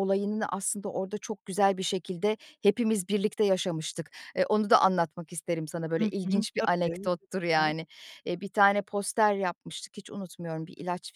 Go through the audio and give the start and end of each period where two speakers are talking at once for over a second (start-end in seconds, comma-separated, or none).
5.9-7.8